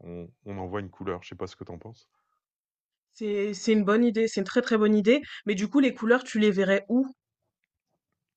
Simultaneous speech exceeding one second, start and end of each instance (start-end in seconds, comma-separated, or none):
none